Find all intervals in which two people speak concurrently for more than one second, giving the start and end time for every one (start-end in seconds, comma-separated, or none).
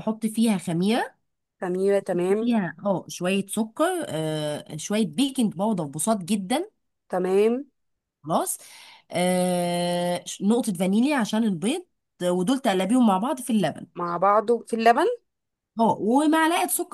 none